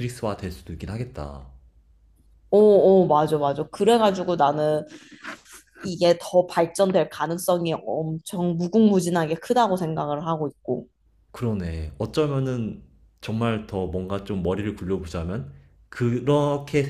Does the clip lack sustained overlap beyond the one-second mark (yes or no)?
yes